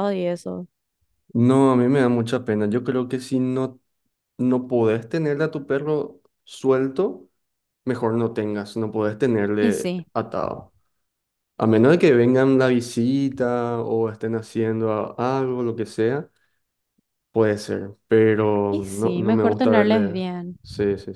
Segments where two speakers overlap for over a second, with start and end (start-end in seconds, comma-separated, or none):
18.7-20.2